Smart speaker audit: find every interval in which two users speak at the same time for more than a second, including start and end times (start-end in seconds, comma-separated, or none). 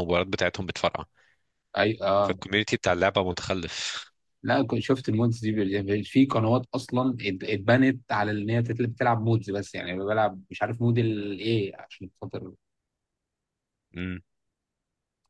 none